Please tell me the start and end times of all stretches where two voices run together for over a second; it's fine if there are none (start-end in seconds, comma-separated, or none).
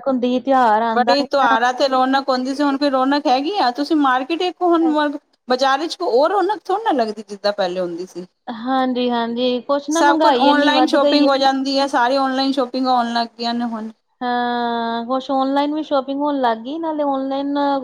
10.0-11.4